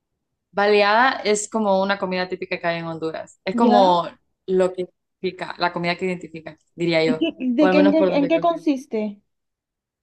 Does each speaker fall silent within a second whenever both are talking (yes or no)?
no